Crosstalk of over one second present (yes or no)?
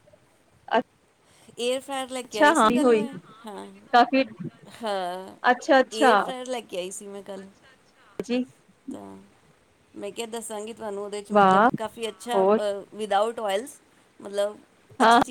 no